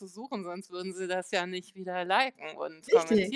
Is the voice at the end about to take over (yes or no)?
yes